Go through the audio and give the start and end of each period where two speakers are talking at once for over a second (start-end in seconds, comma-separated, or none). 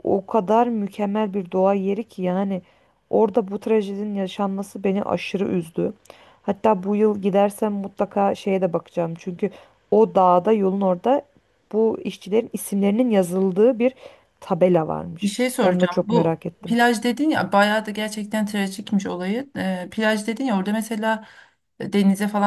15.2-16.8